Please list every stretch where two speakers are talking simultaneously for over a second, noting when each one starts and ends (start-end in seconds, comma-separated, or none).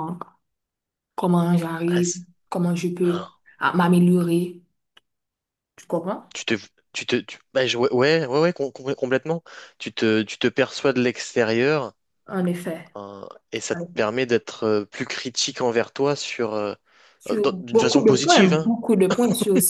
17.3-18.7